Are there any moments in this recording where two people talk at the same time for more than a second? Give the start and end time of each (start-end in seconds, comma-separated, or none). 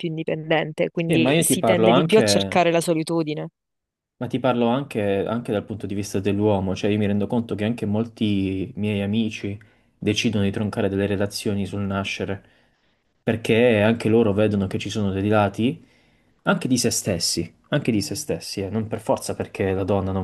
1.1-2.6